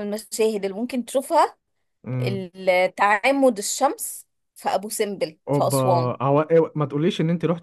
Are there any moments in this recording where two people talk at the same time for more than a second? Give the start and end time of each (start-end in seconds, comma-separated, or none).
none